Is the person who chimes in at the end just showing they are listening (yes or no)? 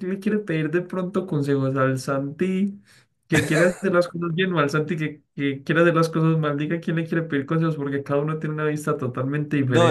no